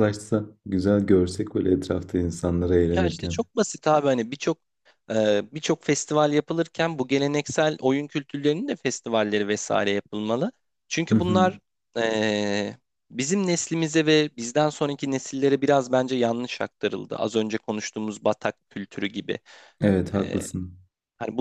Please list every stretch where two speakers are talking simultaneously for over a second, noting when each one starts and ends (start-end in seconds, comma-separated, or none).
none